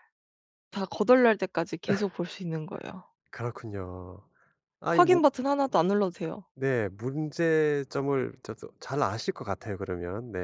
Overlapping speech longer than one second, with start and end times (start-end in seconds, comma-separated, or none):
none